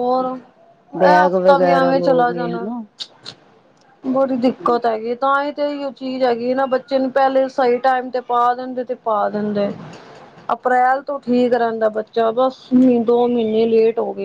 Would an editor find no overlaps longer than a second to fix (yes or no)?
no